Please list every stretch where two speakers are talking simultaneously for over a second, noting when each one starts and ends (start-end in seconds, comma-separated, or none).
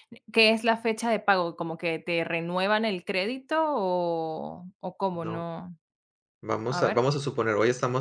none